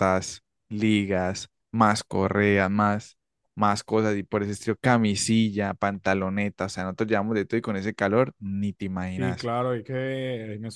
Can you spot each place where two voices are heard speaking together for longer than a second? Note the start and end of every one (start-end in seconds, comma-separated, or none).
none